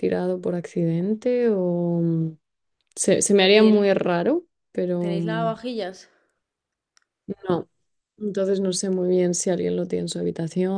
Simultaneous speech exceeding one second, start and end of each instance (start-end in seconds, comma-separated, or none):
none